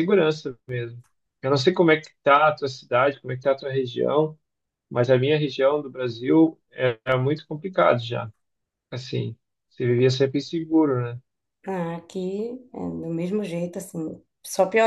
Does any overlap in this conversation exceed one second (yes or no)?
no